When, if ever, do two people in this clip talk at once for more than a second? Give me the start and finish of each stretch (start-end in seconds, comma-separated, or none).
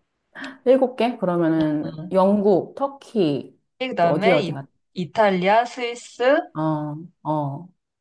none